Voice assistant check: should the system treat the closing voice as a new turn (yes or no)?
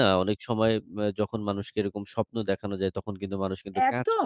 yes